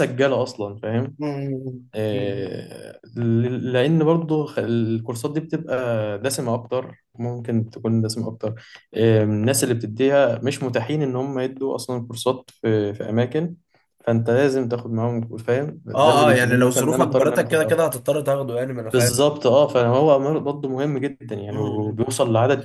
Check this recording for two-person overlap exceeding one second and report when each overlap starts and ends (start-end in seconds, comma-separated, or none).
15.9-17.8